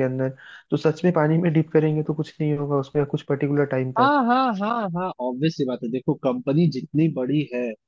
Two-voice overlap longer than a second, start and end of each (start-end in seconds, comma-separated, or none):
none